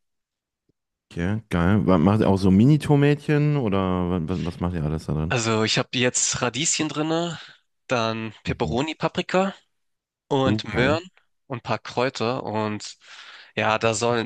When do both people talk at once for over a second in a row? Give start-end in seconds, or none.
none